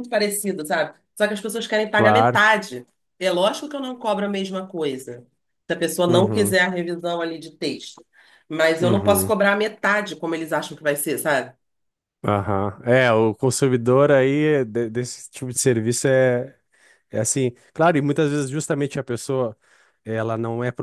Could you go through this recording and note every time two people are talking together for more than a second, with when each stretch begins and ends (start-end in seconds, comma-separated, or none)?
none